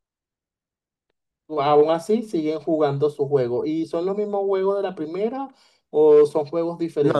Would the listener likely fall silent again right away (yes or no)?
no